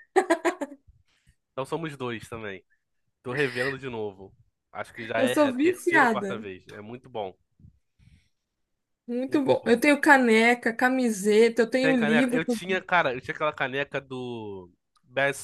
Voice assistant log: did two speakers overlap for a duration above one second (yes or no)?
yes